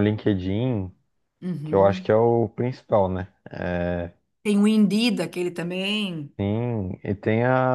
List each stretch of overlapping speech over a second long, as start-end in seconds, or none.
none